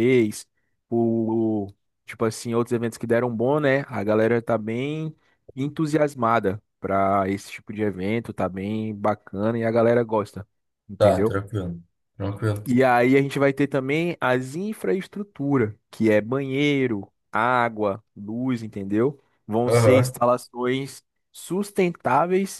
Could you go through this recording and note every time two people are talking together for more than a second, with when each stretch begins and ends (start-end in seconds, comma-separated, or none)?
none